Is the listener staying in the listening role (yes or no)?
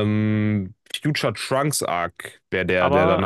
no